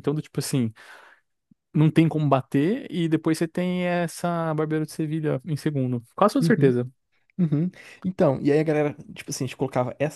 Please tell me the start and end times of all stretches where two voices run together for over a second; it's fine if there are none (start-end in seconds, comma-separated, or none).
none